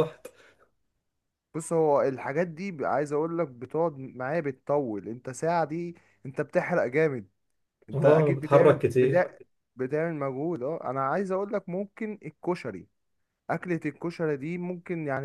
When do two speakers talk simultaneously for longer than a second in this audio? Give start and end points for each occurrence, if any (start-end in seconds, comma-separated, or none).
7.9-9.3